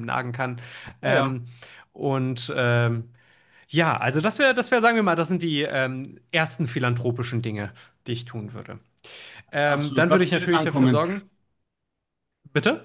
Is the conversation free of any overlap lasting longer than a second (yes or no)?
no